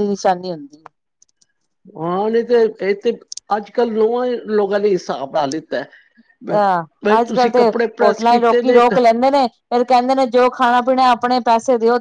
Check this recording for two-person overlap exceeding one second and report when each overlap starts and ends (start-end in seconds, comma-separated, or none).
7.0-9.0